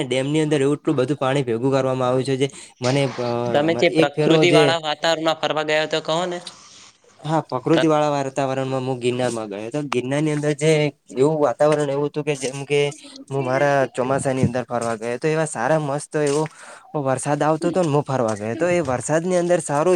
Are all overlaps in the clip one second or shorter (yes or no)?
yes